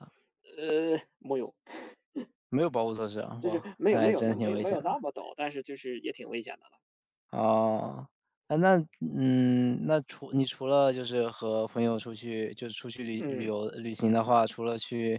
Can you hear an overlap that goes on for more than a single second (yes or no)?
yes